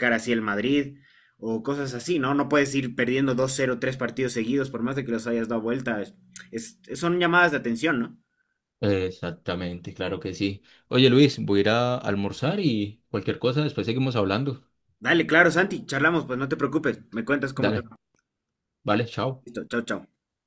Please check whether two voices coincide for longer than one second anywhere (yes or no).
no